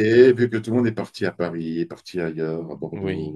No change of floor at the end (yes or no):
yes